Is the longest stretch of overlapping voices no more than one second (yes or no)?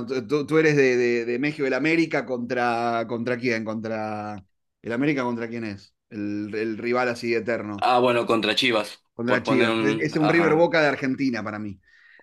no